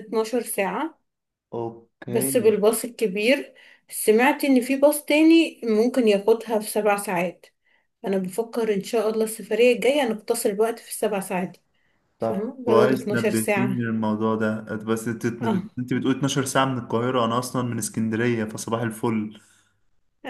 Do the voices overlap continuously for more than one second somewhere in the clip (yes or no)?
yes